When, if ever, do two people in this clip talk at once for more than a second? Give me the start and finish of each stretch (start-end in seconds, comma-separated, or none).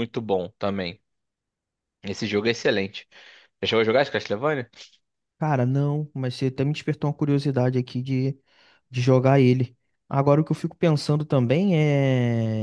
none